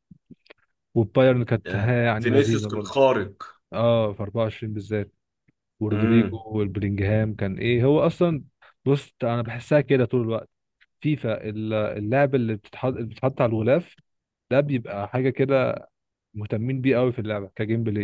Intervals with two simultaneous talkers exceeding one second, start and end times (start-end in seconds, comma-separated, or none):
1.7-3.0